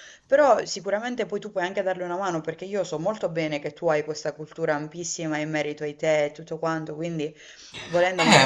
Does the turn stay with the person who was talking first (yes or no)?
no